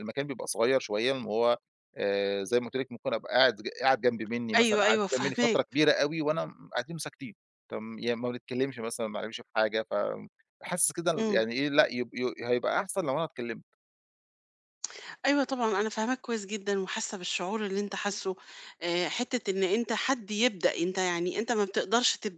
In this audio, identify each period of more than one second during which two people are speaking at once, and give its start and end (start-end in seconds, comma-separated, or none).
4.6-5.8